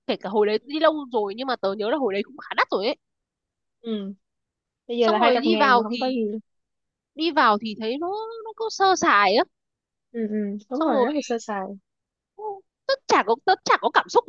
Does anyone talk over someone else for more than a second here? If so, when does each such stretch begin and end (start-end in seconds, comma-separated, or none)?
5.0-6.2